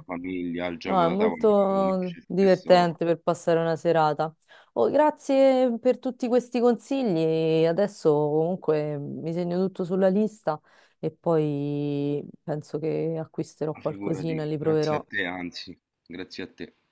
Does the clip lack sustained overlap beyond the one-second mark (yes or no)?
no